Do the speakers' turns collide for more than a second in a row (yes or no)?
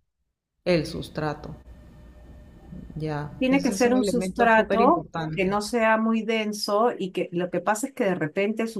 yes